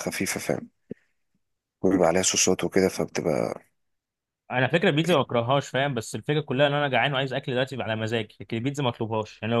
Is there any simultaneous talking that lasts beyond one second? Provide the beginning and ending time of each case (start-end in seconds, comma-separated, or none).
none